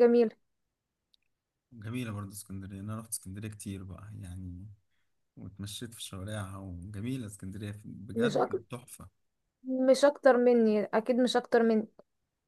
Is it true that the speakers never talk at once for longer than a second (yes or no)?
yes